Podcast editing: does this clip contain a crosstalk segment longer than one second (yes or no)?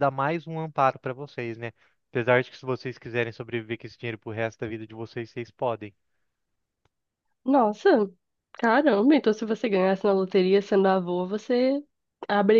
no